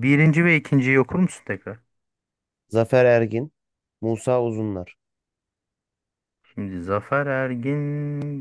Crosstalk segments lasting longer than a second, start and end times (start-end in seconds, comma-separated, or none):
none